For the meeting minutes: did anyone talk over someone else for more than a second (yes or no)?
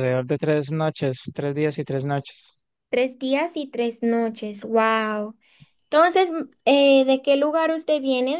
no